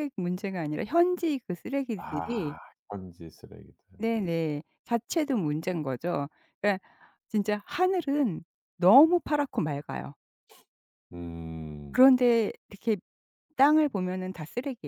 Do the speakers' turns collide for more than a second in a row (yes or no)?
no